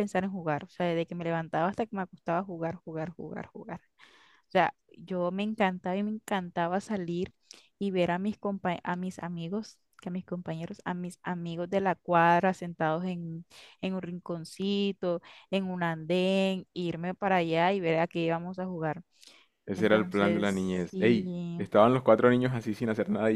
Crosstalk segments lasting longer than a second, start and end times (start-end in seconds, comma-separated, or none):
19.8-21.6